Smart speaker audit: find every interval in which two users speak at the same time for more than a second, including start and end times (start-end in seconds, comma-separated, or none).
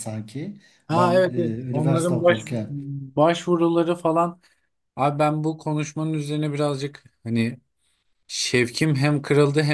0.9-2.4